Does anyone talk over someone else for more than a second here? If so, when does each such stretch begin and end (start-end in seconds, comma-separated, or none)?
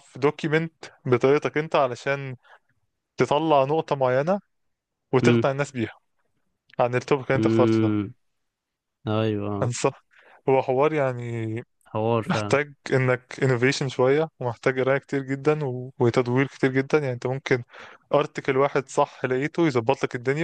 none